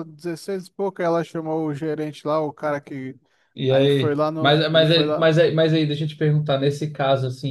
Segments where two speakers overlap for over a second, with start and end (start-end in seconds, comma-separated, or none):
3.7-5.3